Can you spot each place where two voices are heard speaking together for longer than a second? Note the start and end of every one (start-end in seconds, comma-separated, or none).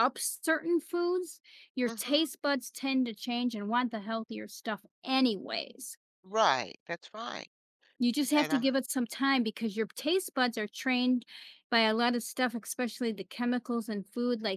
none